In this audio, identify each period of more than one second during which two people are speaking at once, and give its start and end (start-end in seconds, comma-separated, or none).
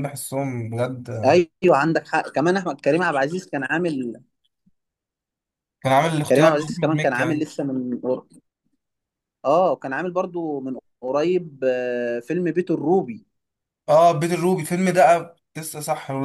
6.3-7.5